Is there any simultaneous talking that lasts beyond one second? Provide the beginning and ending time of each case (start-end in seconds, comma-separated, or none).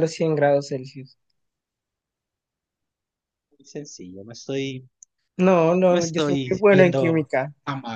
5.9-7.3